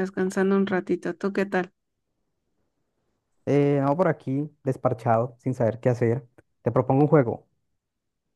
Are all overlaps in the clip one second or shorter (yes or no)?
yes